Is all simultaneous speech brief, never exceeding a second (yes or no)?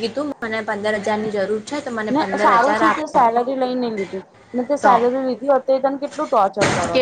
yes